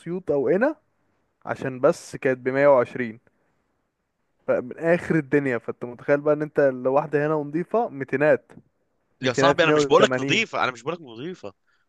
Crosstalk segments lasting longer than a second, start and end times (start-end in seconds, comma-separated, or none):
9.2-10.4